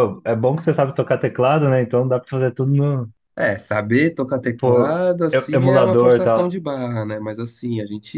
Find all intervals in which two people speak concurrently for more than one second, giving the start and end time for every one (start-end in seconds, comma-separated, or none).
4.6-6.5